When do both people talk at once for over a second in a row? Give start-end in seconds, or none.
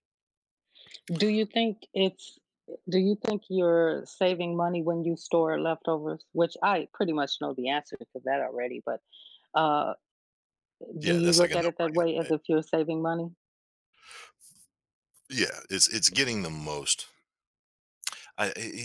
11.0-12.3